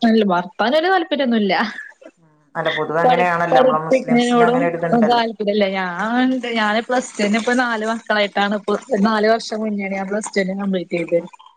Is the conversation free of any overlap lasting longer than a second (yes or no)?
no